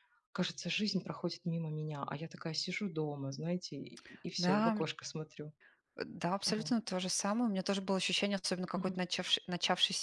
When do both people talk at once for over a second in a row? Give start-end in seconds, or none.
none